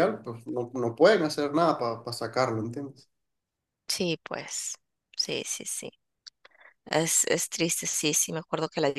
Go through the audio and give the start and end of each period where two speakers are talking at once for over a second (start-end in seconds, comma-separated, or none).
none